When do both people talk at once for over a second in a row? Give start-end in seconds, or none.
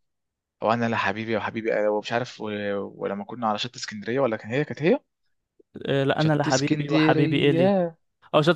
6.2-7.8